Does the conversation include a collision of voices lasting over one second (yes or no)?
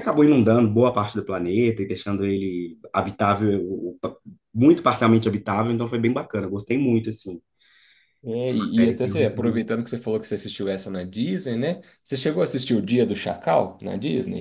yes